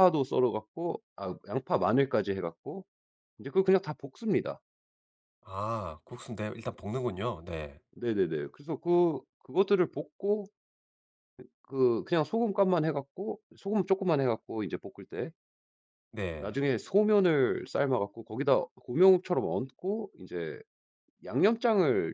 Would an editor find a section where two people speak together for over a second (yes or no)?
no